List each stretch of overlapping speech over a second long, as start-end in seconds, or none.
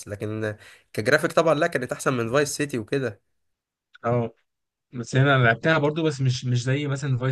none